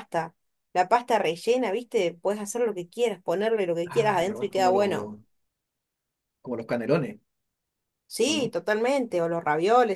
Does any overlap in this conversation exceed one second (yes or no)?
yes